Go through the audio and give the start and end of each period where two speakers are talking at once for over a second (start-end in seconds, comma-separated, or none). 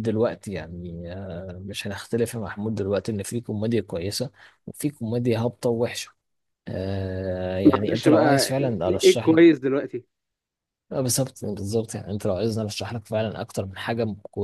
7.7-9.4